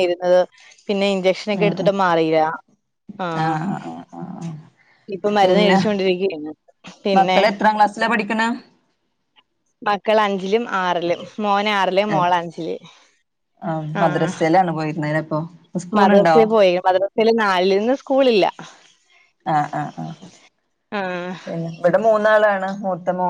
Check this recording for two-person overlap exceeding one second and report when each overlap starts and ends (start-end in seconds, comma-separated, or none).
none